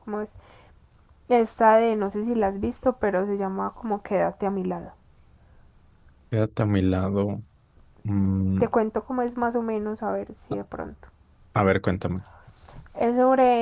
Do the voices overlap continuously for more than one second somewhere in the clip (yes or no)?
no